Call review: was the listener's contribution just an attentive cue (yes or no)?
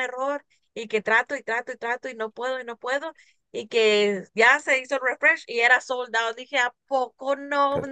no